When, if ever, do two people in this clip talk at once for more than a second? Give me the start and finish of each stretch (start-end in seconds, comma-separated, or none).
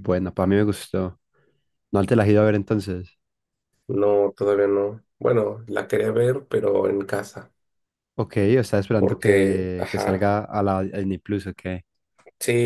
9.0-10.2